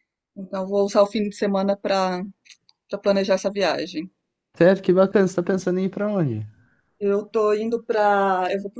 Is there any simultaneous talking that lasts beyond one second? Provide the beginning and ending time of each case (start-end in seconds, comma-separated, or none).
none